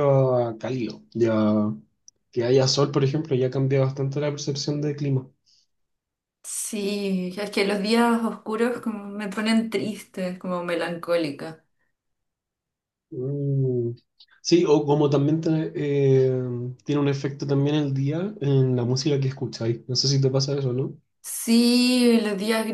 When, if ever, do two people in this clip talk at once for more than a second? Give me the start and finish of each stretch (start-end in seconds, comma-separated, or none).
none